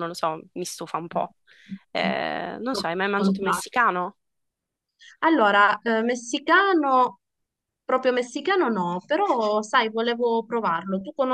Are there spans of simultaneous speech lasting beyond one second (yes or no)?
no